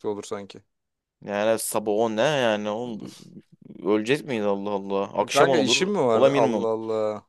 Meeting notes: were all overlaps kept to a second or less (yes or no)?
no